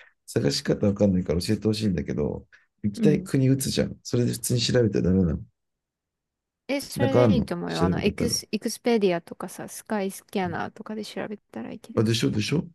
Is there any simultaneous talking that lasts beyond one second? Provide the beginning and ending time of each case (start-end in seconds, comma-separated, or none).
7.0-8.4